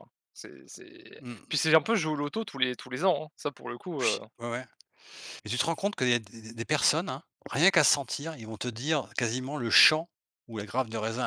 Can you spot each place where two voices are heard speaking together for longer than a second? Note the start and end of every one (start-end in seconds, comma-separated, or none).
none